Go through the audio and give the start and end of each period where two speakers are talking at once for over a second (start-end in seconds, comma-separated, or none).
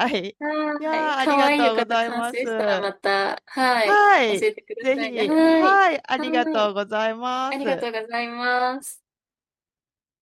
0.8-2.5, 3.8-6.8